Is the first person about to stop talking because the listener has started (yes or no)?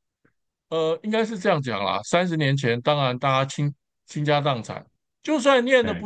no